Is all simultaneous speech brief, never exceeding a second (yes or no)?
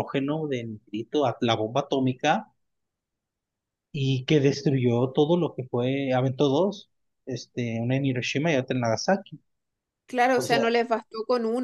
yes